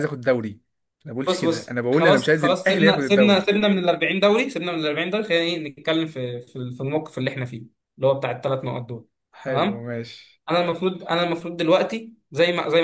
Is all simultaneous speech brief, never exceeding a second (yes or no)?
no